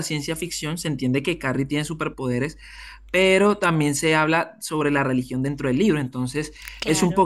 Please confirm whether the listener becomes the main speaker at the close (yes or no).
no